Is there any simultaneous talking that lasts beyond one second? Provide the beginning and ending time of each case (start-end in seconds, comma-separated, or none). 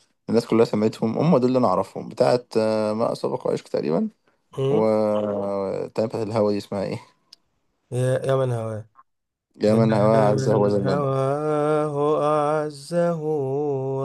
9.7-11.1